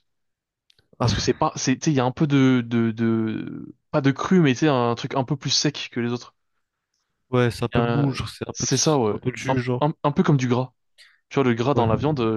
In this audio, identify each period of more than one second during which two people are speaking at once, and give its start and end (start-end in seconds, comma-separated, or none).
7.8-9.8